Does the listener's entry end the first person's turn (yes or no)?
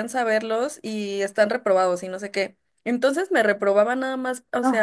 no